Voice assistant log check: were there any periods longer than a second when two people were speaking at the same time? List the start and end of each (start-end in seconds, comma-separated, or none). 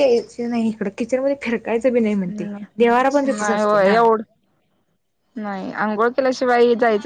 2.3-4.0